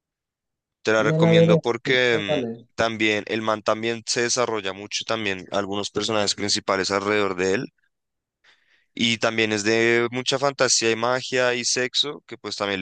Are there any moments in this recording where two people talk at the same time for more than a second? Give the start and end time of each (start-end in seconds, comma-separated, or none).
1.0-2.7